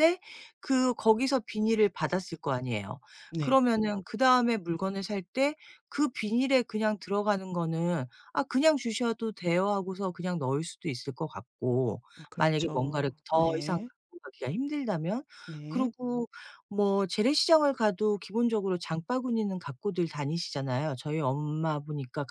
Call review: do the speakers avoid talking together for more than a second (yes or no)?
no